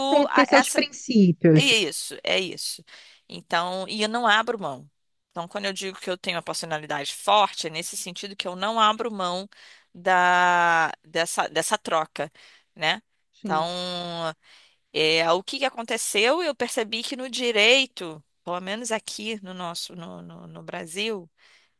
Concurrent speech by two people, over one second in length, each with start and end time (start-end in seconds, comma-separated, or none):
none